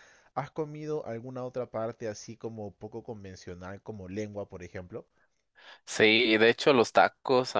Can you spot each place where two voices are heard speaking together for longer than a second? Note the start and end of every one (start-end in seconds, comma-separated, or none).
none